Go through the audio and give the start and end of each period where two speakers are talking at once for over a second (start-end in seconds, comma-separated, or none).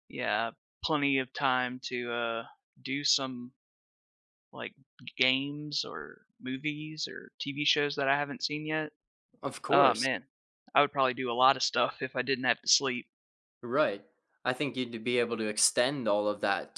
none